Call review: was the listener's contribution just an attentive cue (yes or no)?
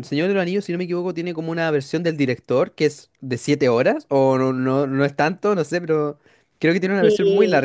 no